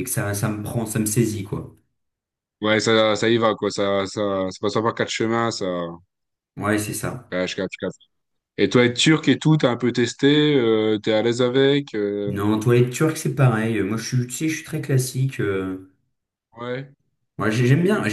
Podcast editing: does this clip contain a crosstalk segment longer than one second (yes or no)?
no